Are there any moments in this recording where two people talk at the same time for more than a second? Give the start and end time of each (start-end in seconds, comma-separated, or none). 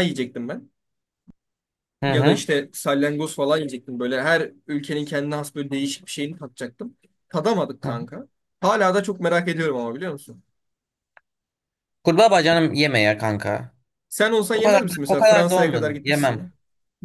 14.5-16.5